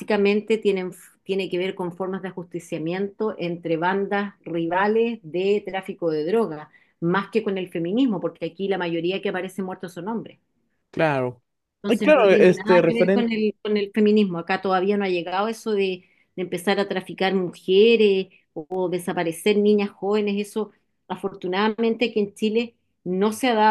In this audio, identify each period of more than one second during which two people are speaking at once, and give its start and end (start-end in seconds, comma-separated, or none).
11.9-13.3